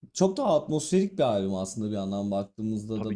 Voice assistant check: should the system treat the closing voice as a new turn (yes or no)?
no